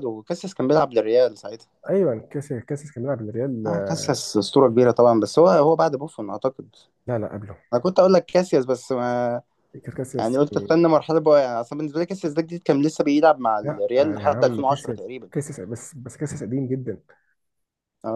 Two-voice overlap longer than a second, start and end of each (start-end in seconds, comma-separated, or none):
13.6-15.3